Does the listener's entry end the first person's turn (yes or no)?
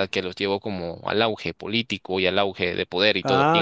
yes